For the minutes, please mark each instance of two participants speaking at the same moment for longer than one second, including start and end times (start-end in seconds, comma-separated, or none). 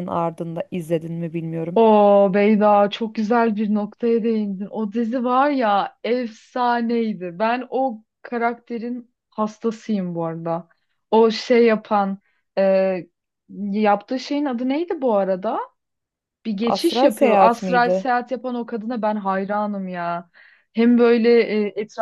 16.6-18.1